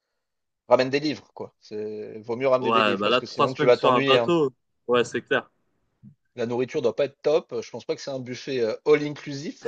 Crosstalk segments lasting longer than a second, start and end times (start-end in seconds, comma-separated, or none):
2.6-4.3